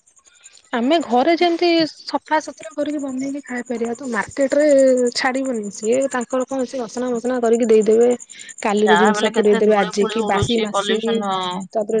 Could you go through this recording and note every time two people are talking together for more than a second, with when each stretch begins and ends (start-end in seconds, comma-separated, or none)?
8.9-11.0